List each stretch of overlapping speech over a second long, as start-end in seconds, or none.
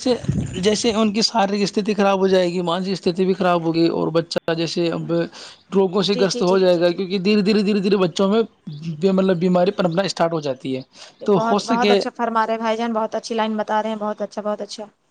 none